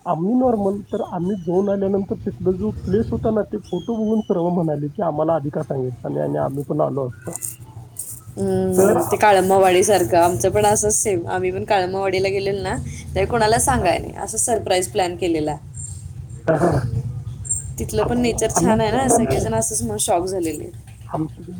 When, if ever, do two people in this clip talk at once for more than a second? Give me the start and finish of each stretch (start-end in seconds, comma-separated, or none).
8.8-10.2